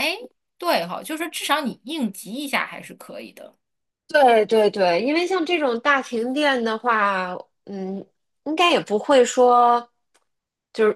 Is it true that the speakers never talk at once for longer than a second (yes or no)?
yes